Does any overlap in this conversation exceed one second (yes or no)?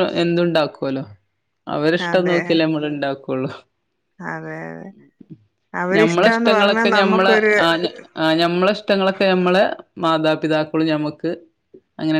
yes